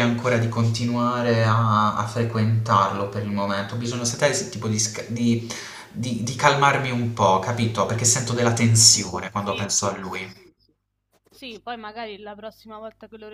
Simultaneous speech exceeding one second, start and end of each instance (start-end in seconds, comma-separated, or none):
8.8-10.5